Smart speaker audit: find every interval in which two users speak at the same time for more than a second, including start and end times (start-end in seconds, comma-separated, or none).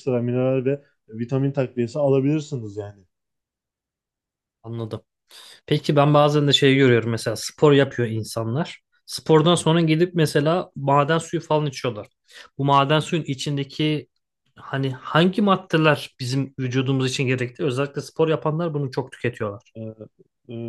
none